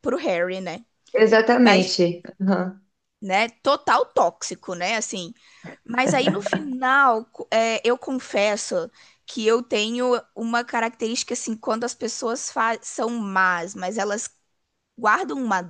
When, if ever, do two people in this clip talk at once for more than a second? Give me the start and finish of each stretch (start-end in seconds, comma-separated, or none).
none